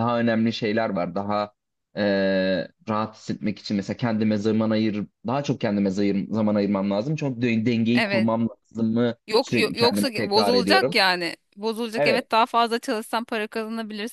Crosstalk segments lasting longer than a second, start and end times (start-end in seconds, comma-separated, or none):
9.3-10.9